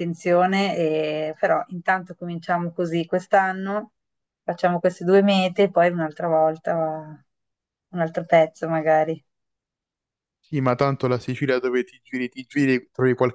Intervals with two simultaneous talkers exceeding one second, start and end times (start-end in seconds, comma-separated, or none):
none